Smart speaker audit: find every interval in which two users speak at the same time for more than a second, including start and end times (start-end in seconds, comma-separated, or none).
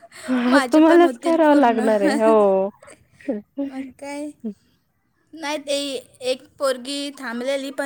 0.5-1.9